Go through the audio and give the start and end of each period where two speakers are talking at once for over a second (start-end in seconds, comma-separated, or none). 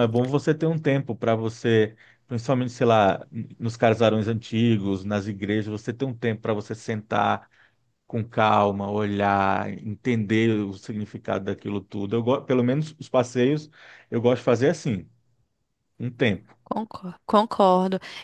none